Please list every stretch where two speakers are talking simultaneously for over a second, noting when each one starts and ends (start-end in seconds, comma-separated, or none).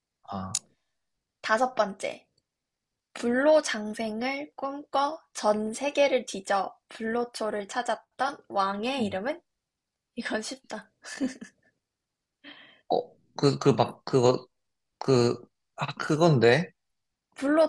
none